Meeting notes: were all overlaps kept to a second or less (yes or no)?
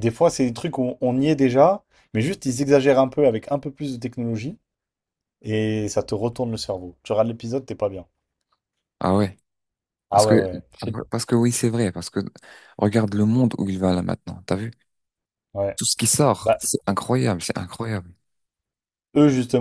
yes